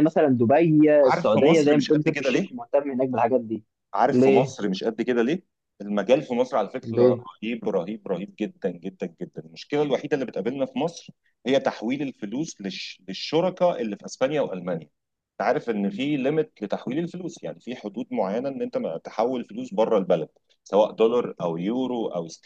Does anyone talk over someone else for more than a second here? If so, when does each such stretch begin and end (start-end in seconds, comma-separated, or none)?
1.0-2.6